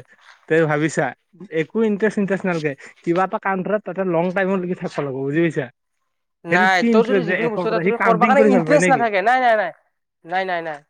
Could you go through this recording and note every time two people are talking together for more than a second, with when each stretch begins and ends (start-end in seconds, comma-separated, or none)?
6.5-9.1